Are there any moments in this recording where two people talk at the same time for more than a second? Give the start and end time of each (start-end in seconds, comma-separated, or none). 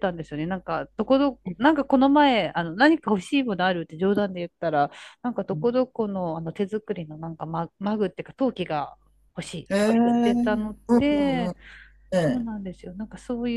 9.7-11.5